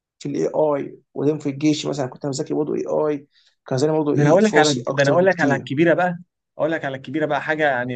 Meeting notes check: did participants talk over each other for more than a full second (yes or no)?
yes